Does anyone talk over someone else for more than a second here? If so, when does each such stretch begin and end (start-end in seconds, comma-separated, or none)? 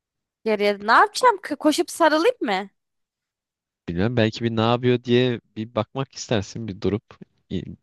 none